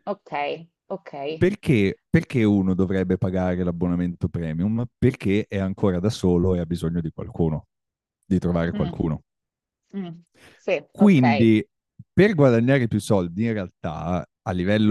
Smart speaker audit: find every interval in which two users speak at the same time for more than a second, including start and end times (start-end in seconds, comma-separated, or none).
none